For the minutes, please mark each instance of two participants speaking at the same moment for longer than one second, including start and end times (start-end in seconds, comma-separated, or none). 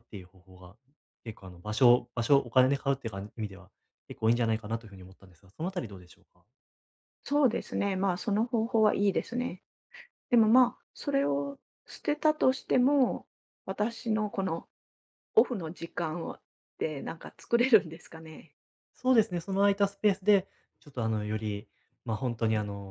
none